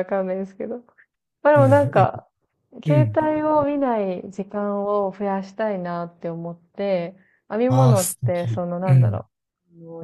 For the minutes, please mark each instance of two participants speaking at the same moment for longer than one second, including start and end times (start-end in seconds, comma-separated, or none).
7.7-9.2